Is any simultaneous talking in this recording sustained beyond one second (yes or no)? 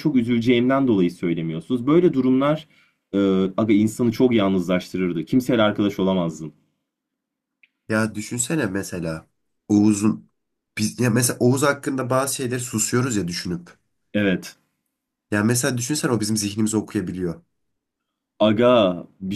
no